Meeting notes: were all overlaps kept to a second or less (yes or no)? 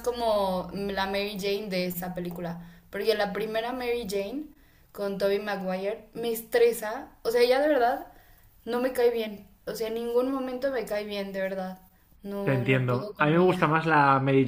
no